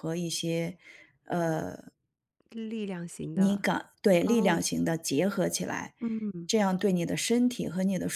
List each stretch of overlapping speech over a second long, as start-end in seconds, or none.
none